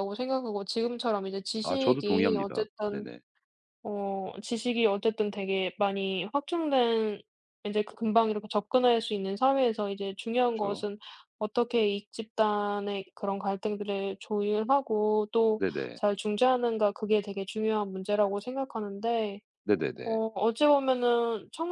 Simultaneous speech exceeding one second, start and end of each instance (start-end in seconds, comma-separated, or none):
1.6-3.1